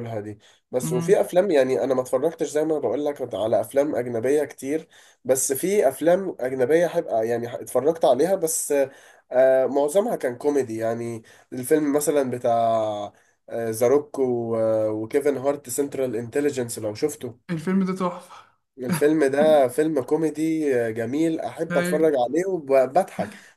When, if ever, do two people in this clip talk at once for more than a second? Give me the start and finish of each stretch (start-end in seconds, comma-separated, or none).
none